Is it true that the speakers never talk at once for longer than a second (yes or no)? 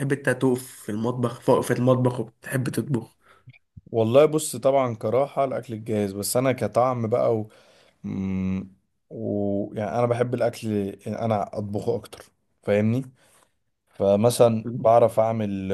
yes